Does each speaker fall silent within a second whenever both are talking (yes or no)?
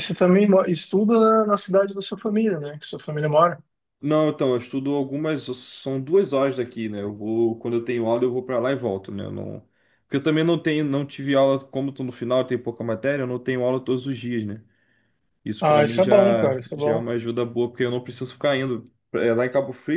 no